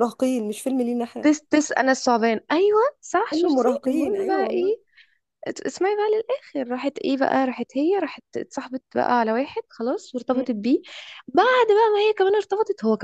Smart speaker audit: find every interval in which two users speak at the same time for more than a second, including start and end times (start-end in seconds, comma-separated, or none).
3.3-4.8